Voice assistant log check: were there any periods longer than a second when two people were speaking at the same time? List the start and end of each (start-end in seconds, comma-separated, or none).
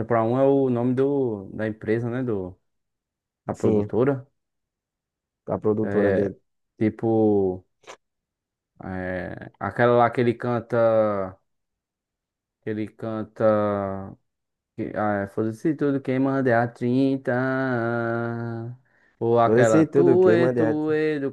19.4-20.8